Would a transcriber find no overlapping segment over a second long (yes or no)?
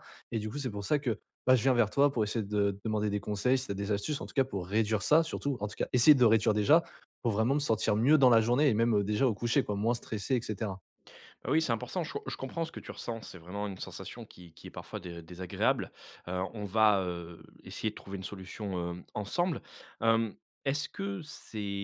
yes